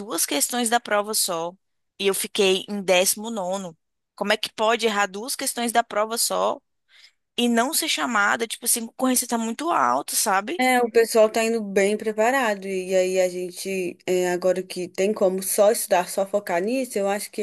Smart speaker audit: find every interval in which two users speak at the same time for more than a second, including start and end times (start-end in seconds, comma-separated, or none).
none